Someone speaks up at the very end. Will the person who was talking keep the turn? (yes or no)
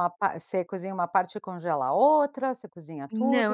no